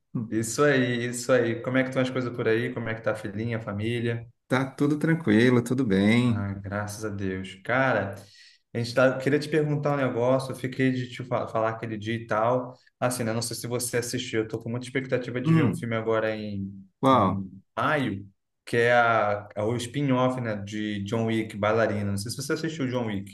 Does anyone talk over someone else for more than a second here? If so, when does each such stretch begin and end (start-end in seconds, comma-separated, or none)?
none